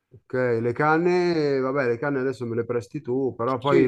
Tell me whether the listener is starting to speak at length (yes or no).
yes